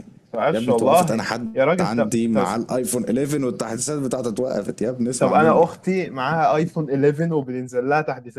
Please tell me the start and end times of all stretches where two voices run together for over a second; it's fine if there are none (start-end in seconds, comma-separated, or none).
0.5-2.4